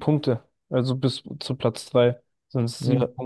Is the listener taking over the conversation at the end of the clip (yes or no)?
no